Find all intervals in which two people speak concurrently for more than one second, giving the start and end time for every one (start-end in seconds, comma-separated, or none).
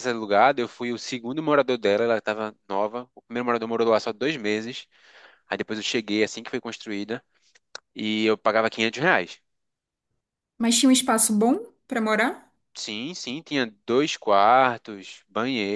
none